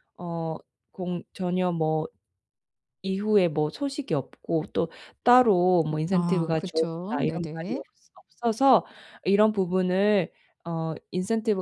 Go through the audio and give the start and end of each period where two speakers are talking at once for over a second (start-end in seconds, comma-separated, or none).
5.9-7.8